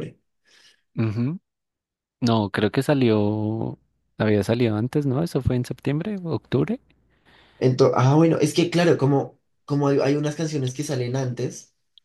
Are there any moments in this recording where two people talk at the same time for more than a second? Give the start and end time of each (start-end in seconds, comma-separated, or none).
none